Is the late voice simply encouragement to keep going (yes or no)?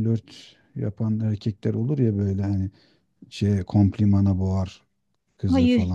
no